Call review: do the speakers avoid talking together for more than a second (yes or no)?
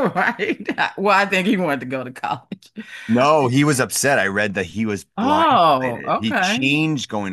no